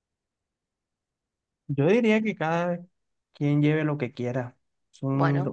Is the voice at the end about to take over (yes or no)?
no